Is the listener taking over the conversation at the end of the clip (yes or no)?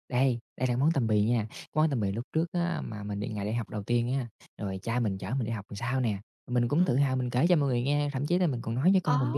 no